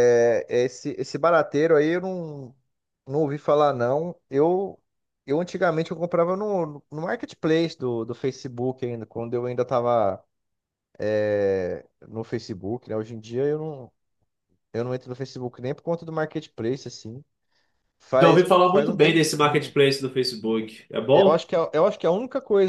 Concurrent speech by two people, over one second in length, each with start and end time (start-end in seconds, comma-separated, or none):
18.2-19.8